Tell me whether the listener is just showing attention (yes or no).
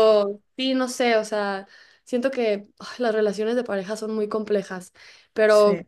yes